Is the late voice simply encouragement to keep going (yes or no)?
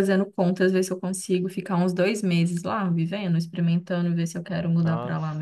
no